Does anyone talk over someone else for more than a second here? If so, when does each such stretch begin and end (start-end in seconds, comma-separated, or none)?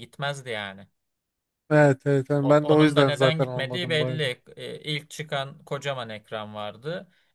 2.4-4.2